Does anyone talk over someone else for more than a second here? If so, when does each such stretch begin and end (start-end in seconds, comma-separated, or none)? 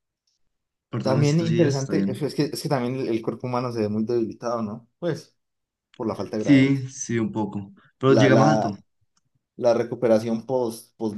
1.0-2.3